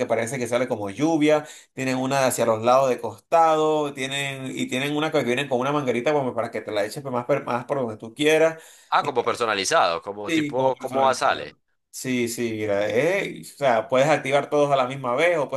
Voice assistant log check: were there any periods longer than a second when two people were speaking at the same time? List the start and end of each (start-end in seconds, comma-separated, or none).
10.2-11.6